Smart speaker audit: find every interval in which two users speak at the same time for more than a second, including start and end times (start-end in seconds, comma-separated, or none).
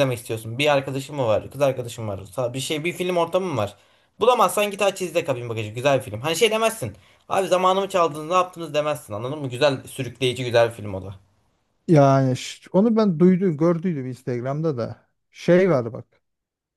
none